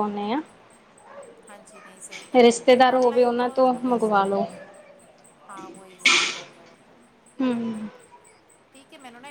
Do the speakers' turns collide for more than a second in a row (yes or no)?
yes